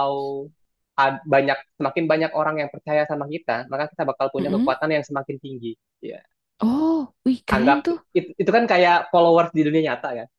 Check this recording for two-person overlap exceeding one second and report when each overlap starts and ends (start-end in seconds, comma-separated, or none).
none